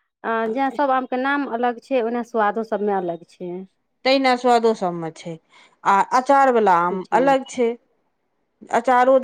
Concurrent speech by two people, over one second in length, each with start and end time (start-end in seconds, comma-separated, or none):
none